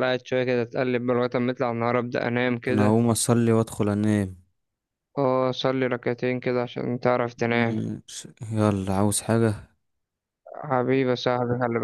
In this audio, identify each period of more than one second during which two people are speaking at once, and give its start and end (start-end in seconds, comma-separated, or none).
none